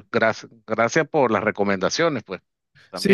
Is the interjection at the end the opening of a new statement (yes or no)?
yes